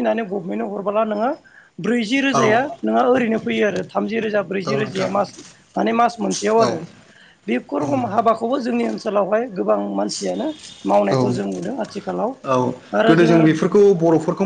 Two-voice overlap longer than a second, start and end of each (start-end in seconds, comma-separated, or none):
none